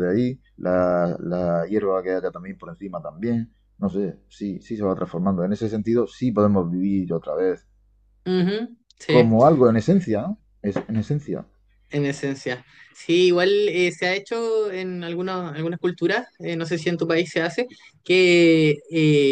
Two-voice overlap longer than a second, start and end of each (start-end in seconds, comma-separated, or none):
none